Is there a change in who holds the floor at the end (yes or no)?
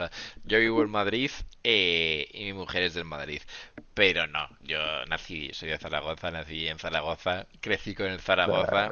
no